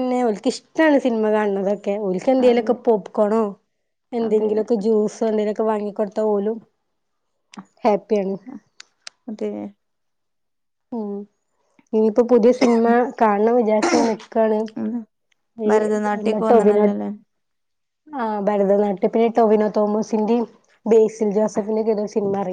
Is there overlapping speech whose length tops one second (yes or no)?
yes